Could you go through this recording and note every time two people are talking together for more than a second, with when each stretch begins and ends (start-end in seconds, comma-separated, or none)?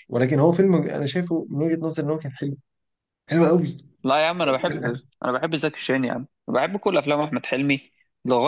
none